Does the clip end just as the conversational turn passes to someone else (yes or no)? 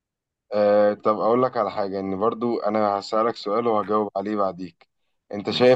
no